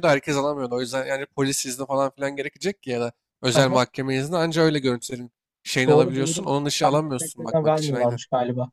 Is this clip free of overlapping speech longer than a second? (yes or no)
no